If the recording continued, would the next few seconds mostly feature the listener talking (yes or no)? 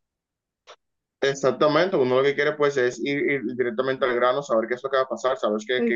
no